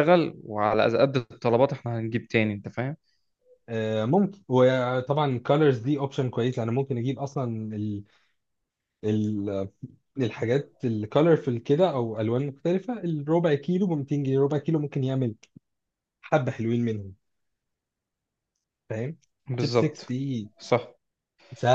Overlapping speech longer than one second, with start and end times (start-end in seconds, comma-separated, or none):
none